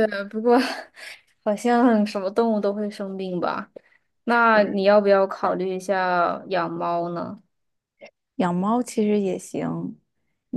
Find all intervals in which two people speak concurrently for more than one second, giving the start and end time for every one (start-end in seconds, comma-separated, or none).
none